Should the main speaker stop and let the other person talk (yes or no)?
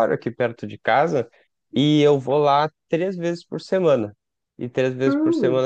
yes